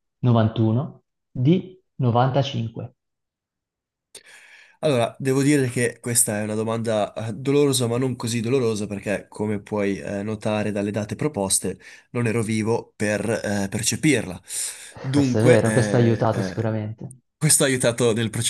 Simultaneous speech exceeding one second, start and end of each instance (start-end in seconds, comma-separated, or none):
15.1-16.7